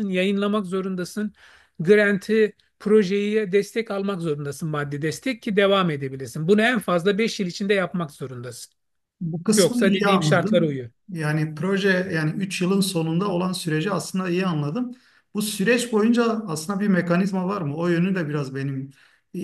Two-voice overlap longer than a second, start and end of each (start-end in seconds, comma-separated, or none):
9.6-10.9